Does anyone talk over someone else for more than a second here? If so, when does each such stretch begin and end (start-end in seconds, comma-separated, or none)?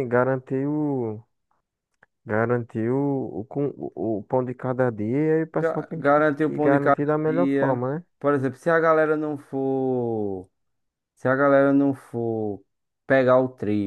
5.5-8.0